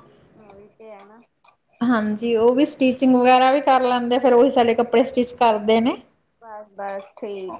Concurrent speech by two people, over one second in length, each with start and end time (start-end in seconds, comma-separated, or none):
none